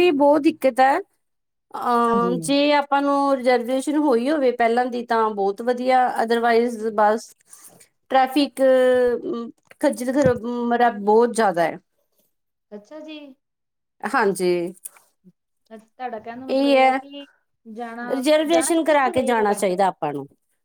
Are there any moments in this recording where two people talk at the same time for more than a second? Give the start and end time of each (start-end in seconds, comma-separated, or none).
18.5-19.7